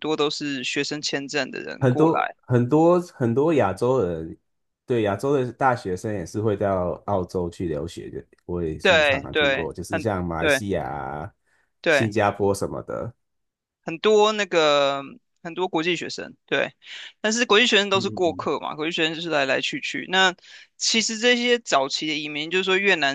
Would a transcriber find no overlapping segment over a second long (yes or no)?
no